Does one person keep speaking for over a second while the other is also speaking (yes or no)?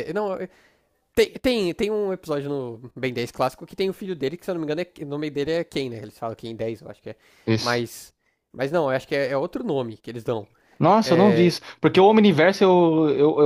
no